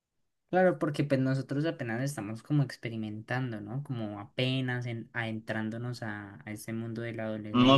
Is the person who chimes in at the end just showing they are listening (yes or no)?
no